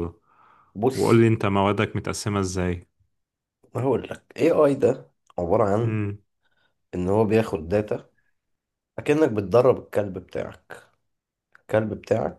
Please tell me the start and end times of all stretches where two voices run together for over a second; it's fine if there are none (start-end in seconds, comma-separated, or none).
none